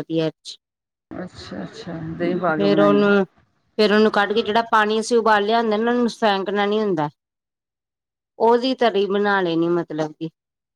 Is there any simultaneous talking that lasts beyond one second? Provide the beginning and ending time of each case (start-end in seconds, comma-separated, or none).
none